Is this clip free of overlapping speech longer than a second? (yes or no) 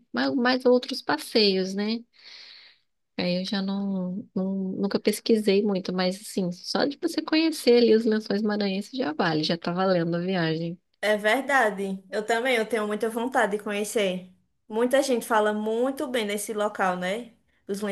yes